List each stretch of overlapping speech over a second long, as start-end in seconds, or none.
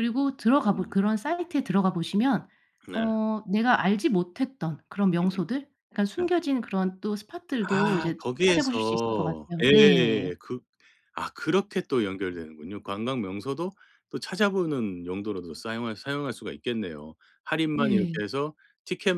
7.7-10.2